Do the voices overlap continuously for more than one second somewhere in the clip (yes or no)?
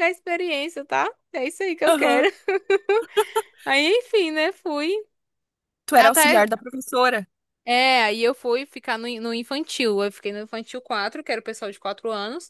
no